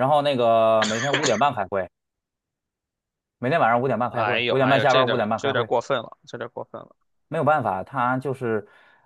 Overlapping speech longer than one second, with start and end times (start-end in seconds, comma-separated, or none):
4.1-5.7